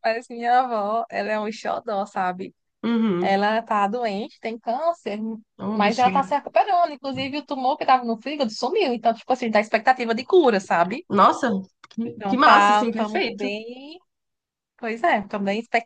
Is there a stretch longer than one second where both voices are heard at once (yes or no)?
yes